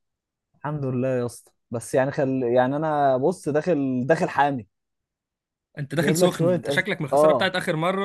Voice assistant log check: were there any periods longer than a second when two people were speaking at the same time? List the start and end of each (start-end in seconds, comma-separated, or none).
6.0-7.5